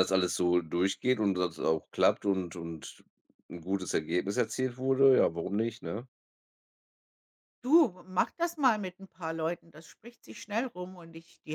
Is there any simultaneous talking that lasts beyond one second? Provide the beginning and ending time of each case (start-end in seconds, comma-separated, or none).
none